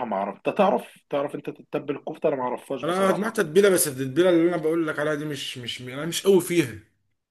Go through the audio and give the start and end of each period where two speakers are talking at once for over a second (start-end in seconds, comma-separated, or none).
none